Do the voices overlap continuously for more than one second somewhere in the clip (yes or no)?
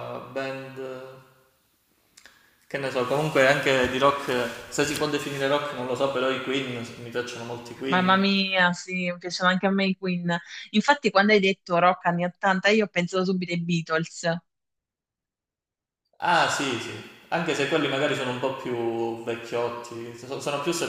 no